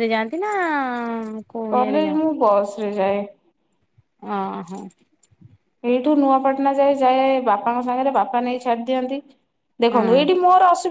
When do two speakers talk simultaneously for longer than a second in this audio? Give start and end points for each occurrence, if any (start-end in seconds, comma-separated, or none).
none